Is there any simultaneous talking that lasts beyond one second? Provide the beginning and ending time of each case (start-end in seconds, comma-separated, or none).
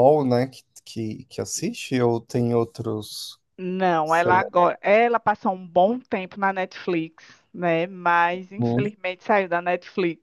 none